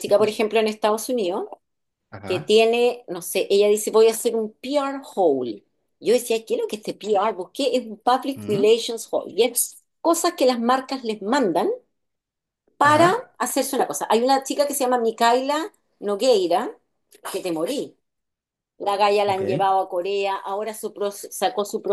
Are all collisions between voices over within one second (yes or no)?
yes